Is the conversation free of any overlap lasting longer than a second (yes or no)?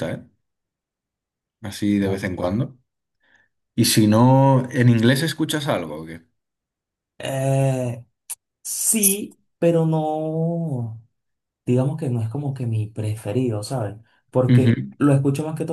yes